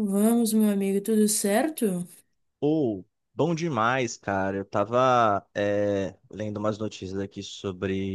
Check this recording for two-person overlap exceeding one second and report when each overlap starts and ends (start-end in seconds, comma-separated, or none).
none